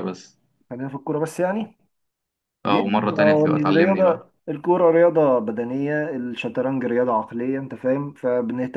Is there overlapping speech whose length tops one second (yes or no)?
yes